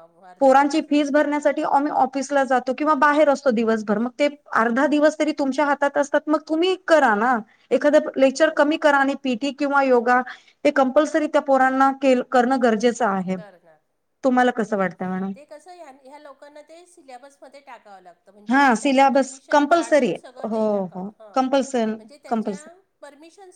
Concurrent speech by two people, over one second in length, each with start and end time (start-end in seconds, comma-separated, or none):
18.5-21.4